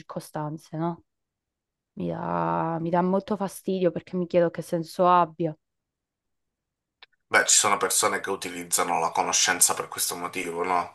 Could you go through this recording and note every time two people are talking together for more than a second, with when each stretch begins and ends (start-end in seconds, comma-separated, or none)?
none